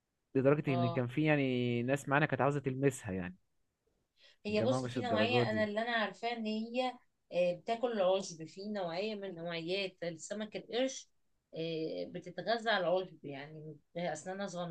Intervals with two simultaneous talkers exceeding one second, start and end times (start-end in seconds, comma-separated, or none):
4.5-5.7